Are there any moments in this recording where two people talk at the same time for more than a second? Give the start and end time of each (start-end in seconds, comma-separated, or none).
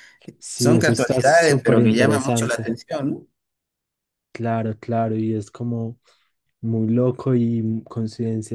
0.6-2.7